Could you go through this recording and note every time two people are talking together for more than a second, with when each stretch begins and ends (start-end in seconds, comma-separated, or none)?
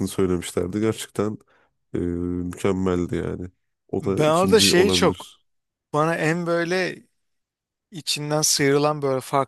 4.0-5.3